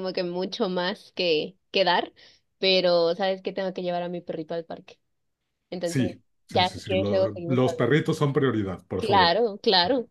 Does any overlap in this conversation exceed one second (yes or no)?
yes